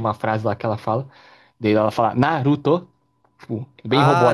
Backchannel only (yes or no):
no